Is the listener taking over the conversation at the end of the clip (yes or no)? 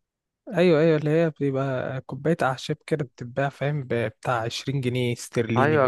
yes